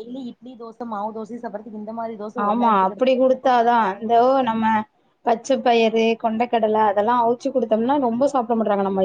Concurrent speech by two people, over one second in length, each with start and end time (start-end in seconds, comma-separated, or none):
2.5-4.5